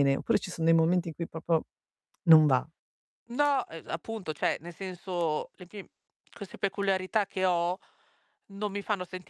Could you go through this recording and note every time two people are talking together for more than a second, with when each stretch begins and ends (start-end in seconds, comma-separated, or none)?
none